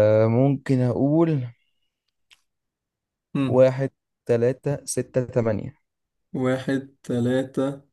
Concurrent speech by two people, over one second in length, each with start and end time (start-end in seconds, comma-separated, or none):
none